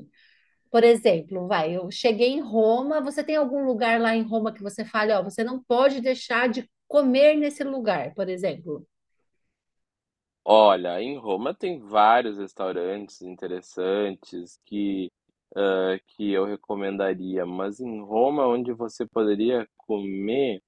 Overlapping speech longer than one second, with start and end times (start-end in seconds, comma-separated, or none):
none